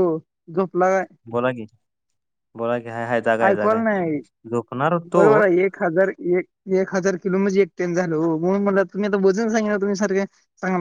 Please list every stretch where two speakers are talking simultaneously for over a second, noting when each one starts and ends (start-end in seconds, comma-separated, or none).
none